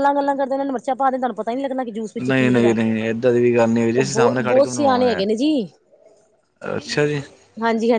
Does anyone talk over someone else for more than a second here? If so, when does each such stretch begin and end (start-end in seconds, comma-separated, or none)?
4.0-5.2